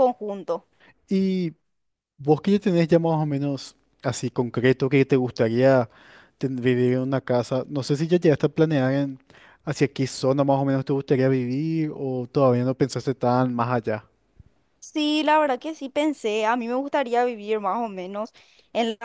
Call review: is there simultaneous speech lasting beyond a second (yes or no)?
no